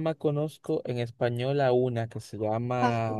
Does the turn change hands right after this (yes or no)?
no